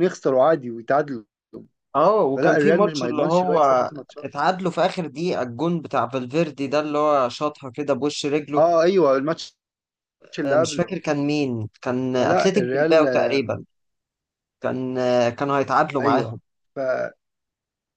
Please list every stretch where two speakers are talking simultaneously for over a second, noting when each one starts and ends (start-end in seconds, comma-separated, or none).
2.4-3.6, 12.2-13.5